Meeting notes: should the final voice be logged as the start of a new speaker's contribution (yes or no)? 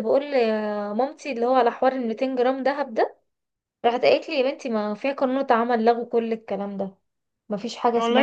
yes